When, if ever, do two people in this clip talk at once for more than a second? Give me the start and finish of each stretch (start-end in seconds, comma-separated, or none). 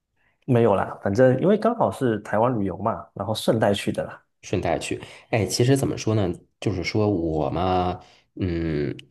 none